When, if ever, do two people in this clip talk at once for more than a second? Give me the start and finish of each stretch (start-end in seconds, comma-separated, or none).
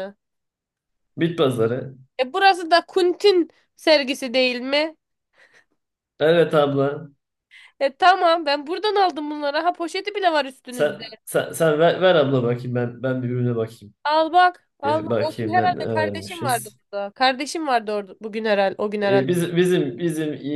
14.8-16.8